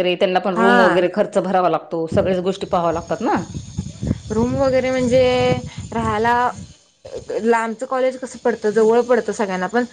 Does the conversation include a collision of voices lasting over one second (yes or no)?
no